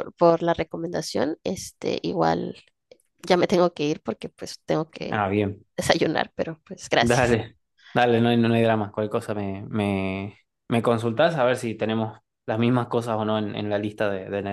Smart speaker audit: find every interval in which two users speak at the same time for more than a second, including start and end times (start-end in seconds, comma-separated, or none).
none